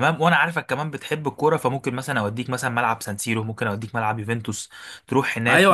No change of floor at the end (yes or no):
no